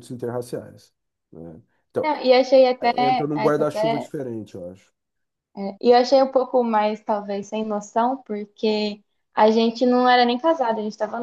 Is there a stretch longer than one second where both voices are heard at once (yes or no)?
yes